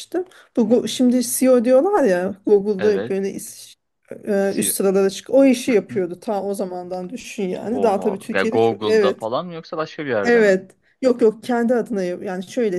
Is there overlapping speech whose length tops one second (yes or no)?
yes